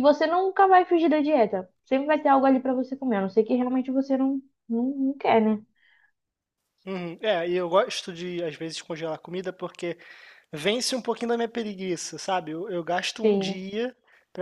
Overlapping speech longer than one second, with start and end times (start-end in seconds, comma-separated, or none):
none